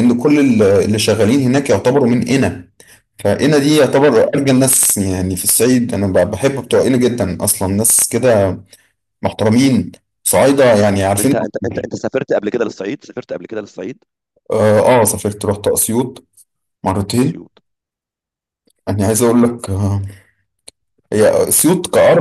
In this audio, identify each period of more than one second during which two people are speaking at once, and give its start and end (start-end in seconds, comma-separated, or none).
none